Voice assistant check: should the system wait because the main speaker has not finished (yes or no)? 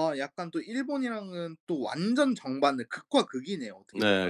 no